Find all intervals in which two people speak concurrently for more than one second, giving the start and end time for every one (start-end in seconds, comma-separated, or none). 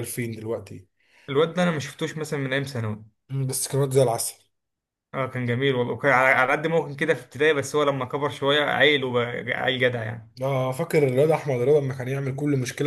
none